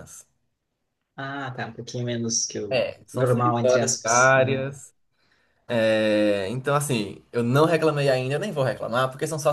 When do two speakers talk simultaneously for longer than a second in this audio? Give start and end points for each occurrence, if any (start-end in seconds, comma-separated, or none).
2.7-4.7